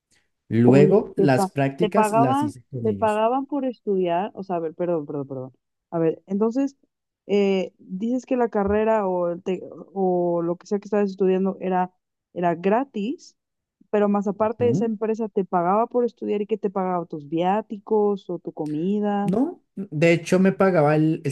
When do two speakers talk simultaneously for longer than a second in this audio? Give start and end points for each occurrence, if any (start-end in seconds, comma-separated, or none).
0.6-3.2